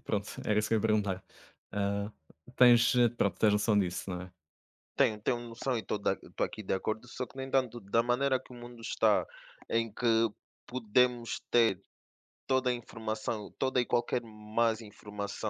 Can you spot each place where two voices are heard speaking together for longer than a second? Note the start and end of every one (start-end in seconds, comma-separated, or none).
none